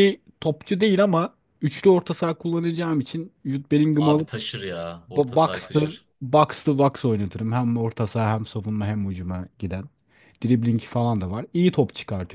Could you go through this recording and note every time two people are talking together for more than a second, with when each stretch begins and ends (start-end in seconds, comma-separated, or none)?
none